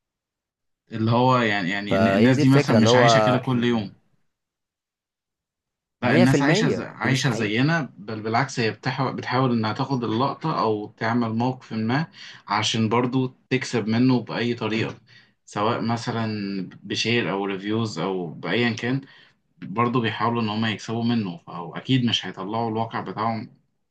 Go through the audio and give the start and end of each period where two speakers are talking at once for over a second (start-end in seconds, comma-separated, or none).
1.9-3.9, 6.0-7.5